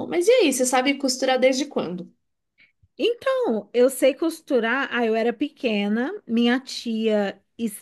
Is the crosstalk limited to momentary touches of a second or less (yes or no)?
yes